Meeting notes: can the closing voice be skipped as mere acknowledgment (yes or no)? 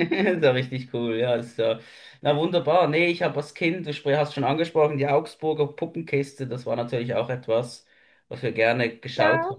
yes